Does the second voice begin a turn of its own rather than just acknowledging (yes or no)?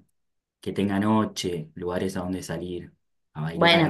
yes